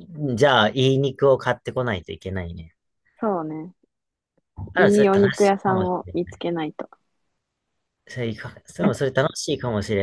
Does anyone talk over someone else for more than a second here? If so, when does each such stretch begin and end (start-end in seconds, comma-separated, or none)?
4.7-6.4